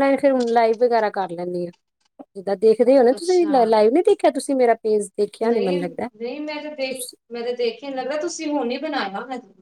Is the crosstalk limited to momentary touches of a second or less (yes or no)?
yes